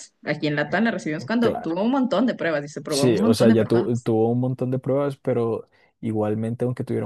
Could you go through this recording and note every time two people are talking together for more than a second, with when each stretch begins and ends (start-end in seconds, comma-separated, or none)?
2.9-4.1